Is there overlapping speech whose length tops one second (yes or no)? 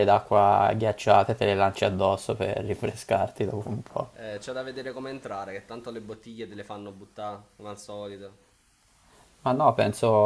no